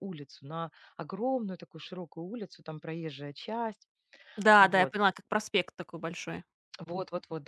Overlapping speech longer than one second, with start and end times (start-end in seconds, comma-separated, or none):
none